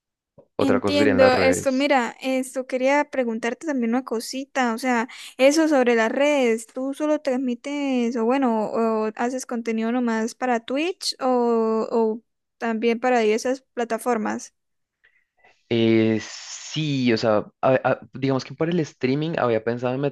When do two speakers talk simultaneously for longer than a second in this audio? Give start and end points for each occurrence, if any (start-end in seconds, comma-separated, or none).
0.6-1.9